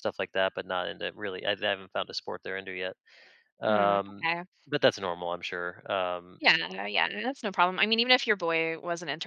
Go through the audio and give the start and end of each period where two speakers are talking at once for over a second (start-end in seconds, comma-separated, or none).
none